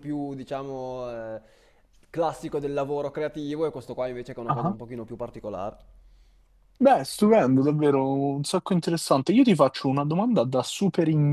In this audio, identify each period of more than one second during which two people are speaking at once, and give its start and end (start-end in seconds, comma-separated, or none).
none